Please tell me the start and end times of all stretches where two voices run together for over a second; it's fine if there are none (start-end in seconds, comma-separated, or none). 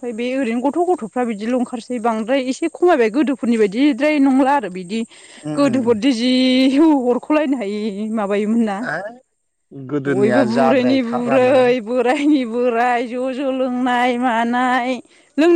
10.1-11.7